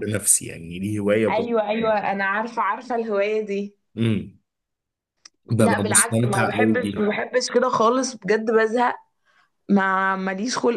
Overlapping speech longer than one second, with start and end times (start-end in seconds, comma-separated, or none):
5.6-7.1